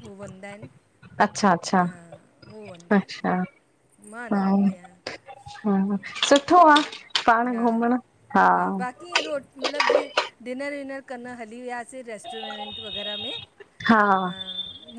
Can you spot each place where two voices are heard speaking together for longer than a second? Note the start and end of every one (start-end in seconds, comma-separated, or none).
none